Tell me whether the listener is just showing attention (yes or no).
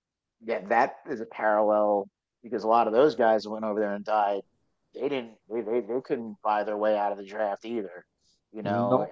yes